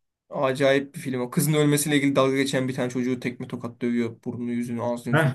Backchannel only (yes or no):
no